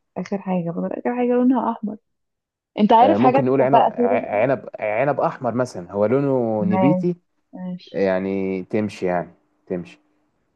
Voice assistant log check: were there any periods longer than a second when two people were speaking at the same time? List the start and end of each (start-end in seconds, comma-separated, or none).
3.0-4.2